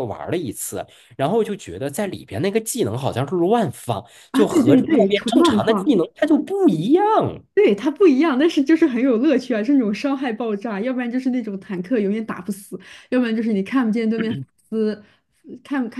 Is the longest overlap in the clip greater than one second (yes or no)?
yes